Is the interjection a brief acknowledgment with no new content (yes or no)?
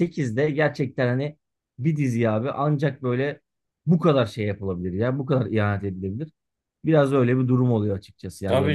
no